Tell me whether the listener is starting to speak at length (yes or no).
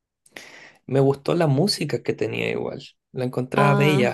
no